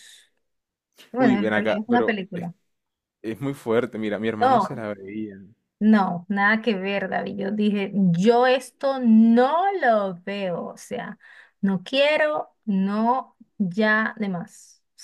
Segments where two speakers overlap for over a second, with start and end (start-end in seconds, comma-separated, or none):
1.2-2.5